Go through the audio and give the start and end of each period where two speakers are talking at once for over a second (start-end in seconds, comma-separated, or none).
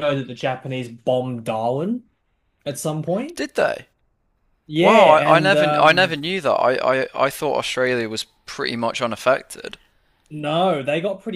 4.8-6.2